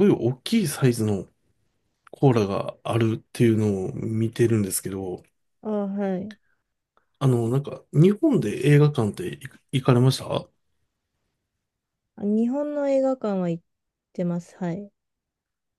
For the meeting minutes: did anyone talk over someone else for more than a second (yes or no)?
no